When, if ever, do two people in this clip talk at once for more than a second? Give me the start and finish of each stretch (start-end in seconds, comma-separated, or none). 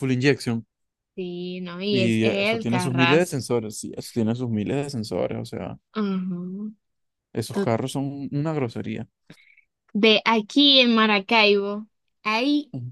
1.9-3.4